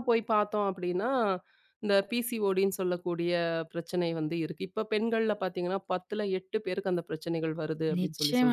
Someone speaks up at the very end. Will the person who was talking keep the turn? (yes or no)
no